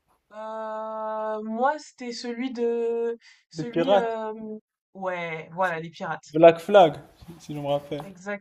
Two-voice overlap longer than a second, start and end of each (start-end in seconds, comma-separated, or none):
none